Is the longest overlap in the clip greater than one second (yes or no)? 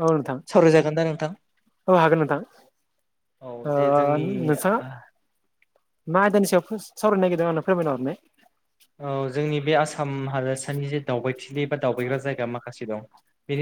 no